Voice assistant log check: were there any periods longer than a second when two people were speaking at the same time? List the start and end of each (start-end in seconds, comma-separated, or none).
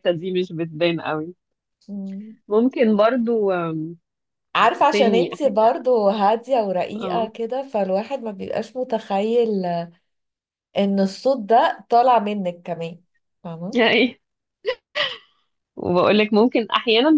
none